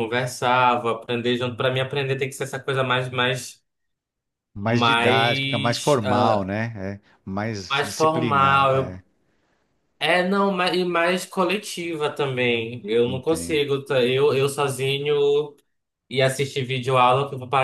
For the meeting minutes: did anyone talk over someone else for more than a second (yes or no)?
yes